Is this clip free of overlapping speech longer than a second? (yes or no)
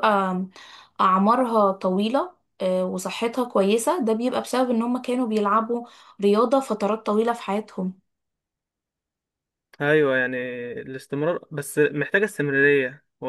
yes